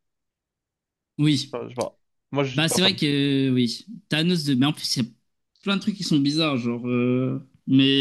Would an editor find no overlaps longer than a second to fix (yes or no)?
yes